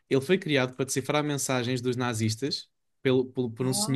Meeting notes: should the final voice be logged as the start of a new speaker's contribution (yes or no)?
no